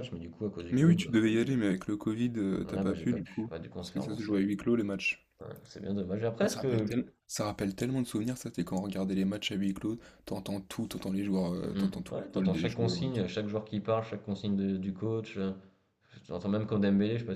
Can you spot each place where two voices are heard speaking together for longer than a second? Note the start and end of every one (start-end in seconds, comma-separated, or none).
2.7-4.3, 11.7-13.2